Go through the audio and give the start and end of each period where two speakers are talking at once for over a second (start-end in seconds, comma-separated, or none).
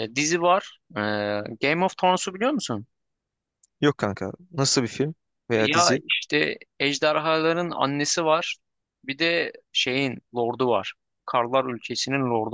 none